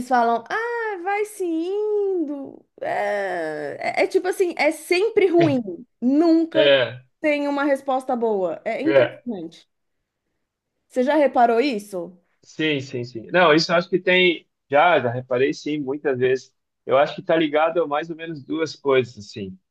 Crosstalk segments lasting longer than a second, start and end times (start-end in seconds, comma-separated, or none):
none